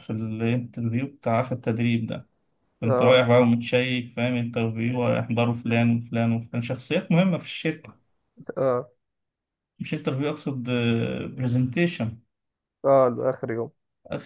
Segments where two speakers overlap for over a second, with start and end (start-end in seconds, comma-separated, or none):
none